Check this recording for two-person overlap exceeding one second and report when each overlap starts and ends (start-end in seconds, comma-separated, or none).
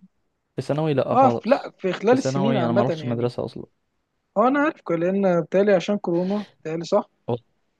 1.1-3.3